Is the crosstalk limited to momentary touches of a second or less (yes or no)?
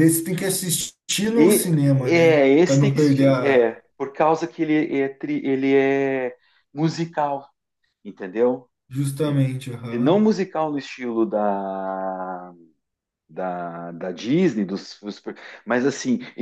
no